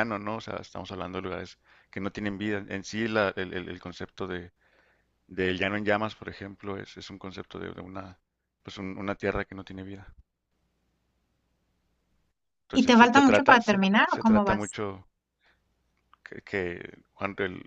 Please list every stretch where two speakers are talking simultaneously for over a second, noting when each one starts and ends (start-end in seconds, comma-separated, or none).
12.7-14.8